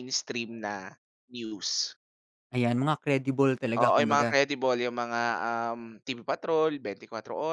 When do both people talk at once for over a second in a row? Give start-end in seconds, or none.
none